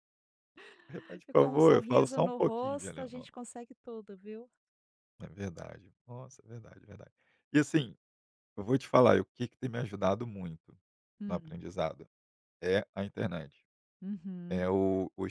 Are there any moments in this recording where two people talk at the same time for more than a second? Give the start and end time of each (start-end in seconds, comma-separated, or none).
1.3-3.3